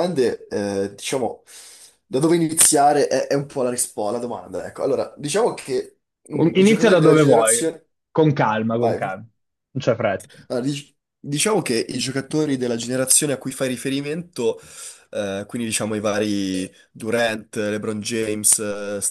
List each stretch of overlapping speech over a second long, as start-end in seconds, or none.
6.3-7.7